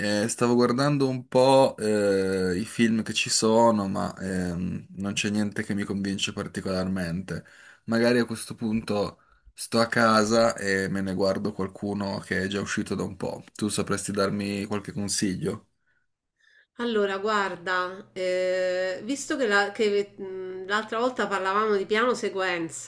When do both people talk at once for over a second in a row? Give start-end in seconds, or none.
none